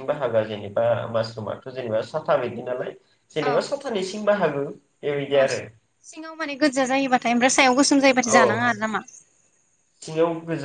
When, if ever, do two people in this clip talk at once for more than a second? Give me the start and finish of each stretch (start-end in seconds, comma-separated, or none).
none